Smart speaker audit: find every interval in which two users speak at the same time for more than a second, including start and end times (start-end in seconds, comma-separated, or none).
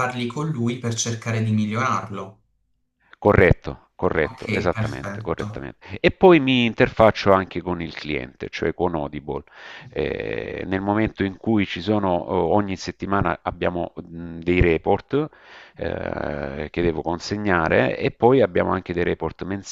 4.2-5.6